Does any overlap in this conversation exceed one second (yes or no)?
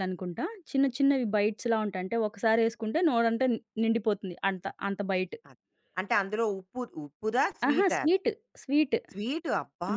no